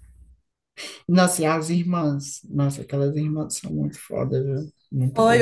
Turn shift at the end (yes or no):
yes